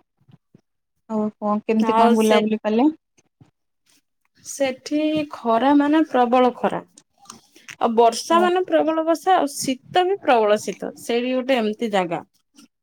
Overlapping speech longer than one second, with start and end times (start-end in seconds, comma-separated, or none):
none